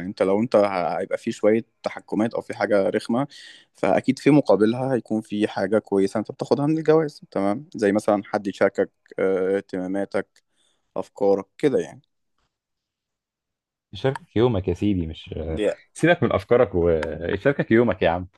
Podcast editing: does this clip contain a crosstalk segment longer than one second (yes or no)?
no